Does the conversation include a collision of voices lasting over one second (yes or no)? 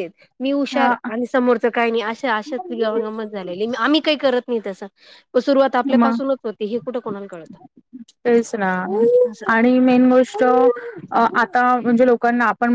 no